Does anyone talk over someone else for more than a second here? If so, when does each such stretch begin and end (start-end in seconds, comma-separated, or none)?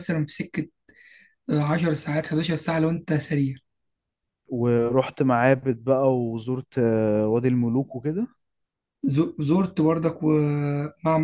none